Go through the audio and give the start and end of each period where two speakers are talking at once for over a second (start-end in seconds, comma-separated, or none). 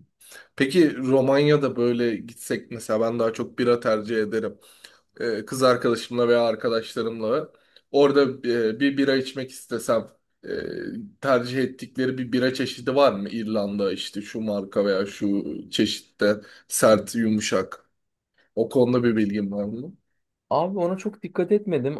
none